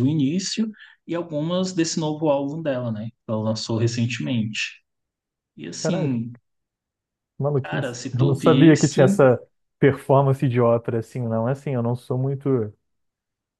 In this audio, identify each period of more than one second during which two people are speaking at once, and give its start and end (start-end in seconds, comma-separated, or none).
7.6-9.0